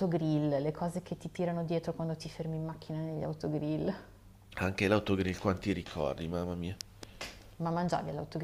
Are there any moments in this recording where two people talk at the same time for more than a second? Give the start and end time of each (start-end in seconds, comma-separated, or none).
none